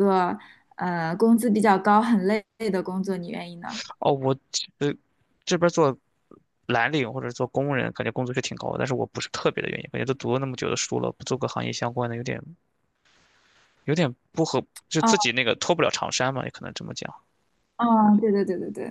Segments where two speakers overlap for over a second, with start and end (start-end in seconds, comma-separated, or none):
none